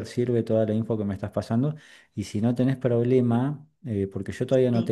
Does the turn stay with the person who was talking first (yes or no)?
yes